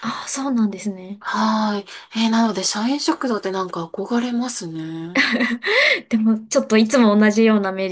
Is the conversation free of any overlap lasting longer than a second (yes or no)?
yes